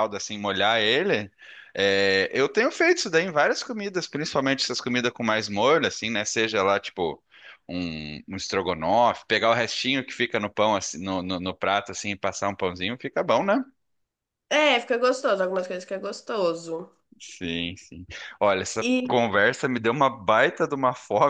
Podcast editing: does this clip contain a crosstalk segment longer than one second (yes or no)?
no